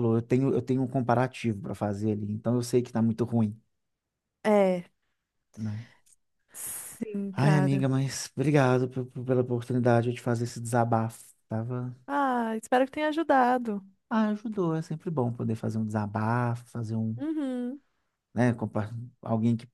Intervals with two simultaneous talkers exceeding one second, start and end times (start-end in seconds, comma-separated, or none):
none